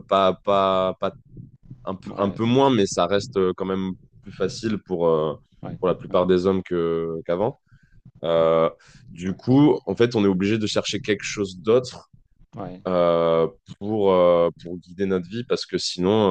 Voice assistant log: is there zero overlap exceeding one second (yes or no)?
yes